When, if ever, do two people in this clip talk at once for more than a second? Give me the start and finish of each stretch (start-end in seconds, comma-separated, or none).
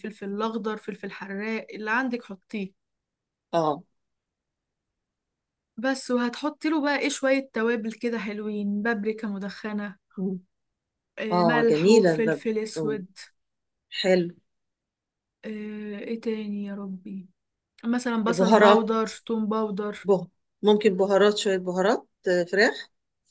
11.3-13.0